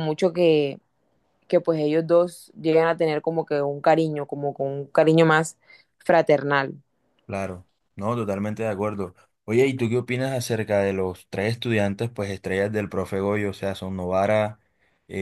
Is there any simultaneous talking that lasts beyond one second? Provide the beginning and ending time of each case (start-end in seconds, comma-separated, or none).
none